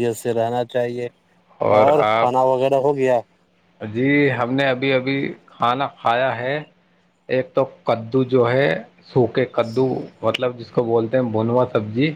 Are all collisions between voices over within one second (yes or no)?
yes